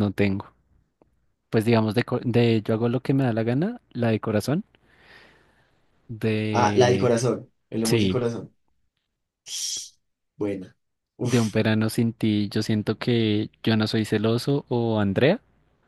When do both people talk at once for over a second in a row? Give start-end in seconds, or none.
none